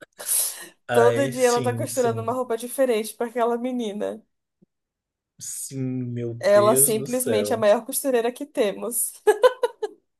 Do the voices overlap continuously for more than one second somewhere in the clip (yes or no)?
yes